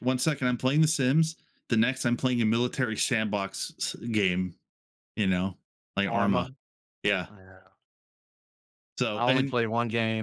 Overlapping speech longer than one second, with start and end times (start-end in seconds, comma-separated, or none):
none